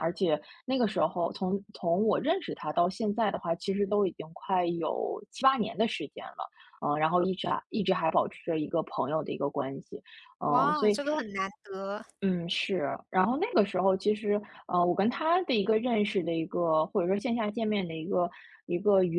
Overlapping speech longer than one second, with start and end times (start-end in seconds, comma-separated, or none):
none